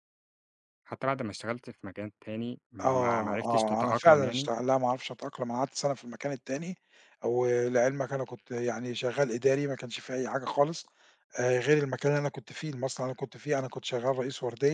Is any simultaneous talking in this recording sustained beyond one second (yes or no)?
yes